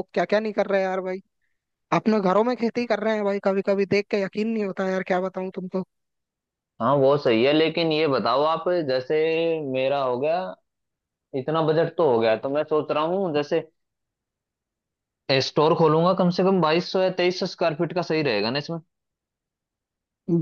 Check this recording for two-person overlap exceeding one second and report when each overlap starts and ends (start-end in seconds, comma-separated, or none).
none